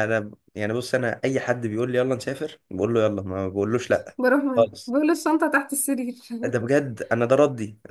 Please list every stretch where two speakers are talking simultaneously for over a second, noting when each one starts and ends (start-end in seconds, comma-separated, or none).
none